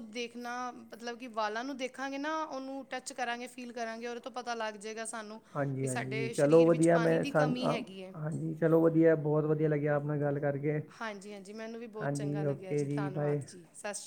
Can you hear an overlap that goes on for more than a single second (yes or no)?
yes